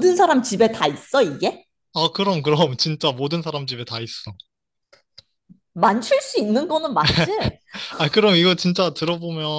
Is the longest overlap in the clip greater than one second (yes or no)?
no